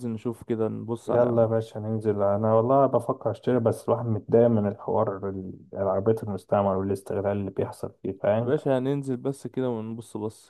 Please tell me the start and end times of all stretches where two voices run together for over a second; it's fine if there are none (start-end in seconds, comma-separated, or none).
none